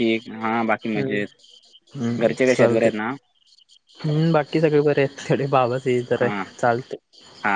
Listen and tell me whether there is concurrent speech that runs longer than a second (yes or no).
no